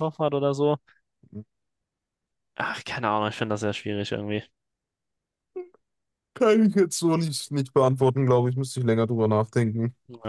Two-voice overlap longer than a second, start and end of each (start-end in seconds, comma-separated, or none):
none